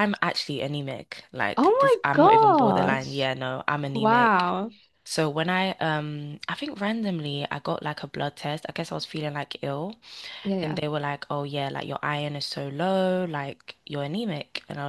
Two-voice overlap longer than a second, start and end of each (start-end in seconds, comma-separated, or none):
1.5-3.3